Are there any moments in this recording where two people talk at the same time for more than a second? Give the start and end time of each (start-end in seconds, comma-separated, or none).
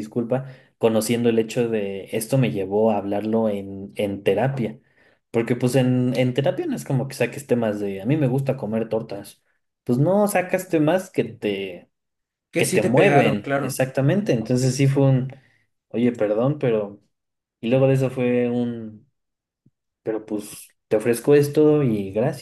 12.6-13.8